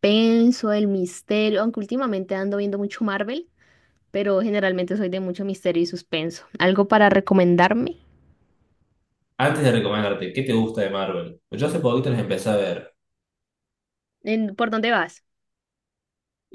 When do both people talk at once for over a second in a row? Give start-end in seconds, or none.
none